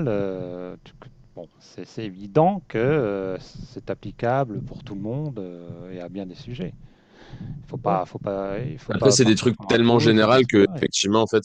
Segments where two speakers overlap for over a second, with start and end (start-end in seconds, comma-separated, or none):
8.9-10.8